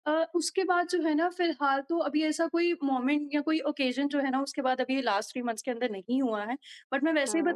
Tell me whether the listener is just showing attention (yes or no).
yes